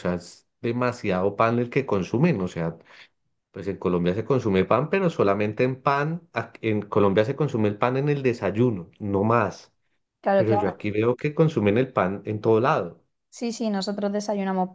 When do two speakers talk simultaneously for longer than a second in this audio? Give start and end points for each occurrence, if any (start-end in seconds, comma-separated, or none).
none